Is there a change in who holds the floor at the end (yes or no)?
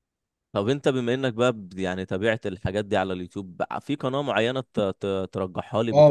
yes